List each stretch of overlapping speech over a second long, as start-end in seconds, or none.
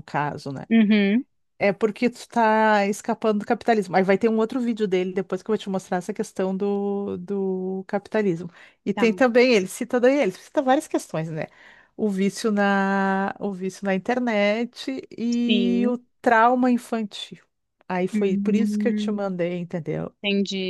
18.1-19.4